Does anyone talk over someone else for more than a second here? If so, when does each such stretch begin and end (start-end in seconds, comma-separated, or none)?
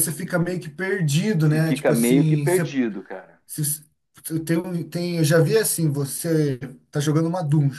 1.4-2.7